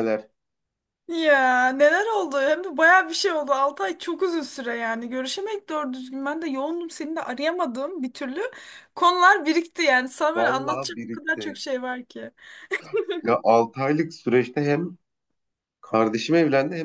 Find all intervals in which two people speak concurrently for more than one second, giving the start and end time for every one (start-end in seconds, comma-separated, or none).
10.3-11.6